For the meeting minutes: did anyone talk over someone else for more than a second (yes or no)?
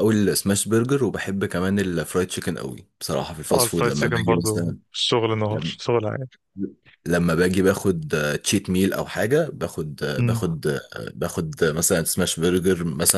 yes